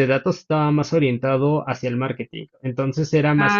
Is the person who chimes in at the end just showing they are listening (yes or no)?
yes